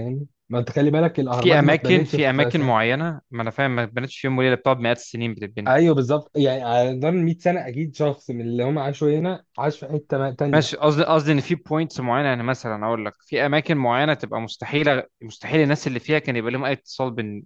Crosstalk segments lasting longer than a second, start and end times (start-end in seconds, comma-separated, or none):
1.3-2.7